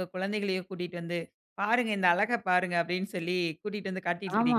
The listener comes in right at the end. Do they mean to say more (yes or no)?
yes